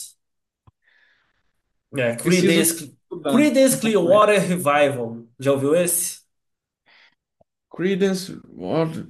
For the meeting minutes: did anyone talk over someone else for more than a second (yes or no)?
yes